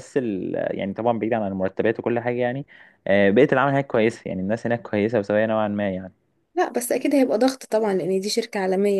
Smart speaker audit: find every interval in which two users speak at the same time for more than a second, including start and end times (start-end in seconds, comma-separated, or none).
none